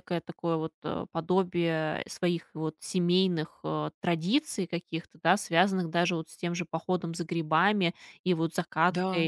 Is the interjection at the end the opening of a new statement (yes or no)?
no